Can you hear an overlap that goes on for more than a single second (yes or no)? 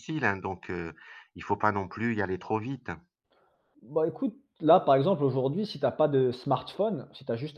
no